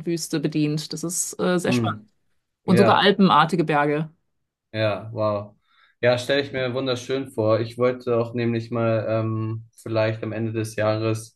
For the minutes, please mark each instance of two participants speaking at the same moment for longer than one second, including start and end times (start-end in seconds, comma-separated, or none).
none